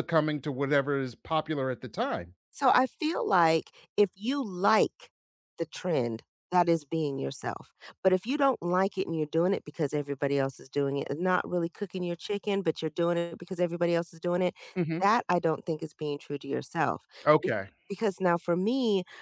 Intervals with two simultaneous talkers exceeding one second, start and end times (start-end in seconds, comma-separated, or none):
none